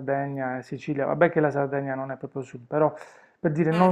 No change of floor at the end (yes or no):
yes